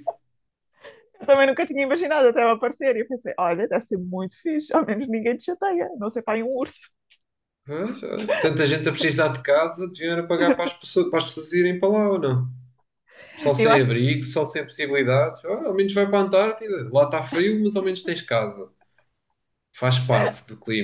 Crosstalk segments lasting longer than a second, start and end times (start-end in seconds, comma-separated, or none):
none